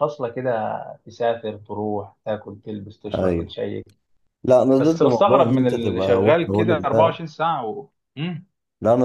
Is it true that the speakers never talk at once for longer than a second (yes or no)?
no